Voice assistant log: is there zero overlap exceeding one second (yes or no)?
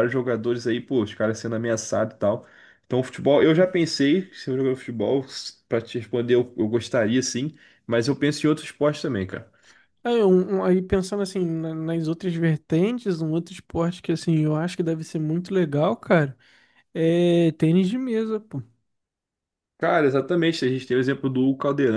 yes